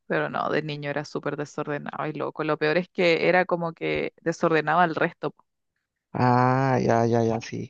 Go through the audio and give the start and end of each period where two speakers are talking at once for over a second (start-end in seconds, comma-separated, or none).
none